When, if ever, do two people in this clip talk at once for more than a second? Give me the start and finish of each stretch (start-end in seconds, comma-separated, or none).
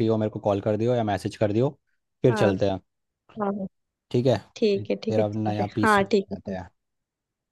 4.8-6.6